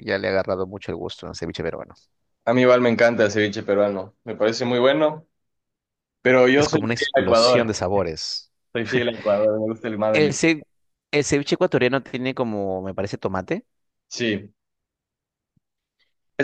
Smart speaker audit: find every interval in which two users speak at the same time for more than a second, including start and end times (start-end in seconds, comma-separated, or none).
6.5-7.8